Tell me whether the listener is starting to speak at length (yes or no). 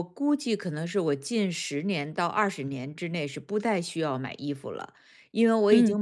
no